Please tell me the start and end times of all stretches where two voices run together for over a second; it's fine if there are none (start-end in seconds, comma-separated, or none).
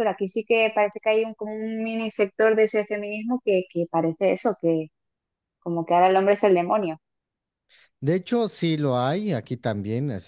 none